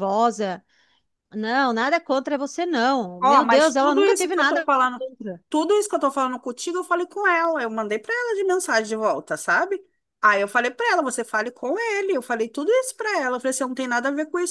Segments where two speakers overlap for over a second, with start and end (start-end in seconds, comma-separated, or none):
3.2-5.0